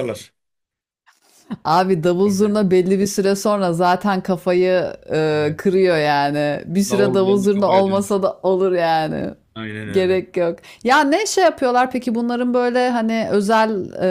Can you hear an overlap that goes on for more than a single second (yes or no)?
yes